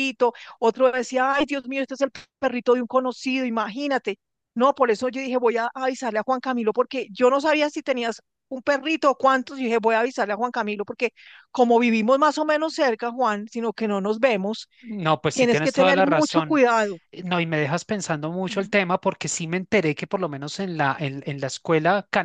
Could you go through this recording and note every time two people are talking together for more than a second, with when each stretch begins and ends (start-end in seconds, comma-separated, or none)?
15.3-16.6